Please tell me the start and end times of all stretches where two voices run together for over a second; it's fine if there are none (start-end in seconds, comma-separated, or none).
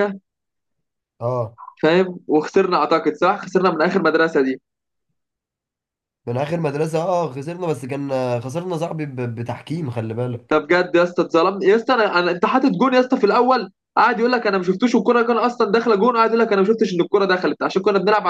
none